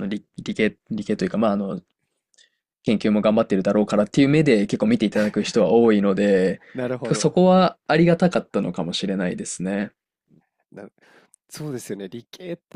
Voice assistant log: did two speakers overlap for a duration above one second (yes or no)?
no